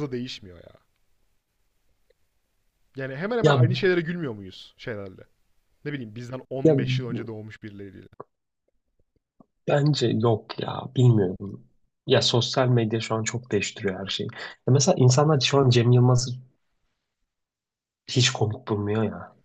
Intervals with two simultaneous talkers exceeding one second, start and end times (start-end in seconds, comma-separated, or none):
none